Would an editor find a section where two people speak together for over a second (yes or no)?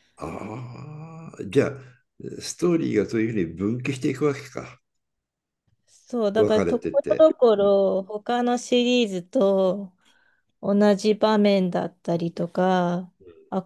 yes